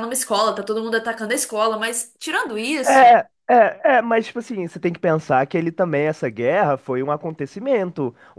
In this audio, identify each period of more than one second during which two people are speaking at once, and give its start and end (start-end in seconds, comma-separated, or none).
none